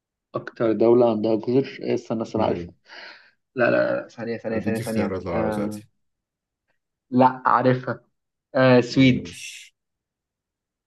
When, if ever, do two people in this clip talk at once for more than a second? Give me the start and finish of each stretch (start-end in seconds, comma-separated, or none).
4.5-5.8